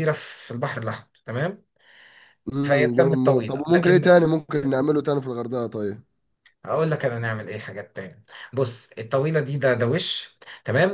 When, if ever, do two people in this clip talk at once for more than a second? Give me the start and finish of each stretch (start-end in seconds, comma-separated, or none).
2.6-4.1